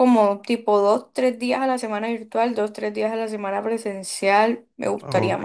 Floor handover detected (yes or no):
yes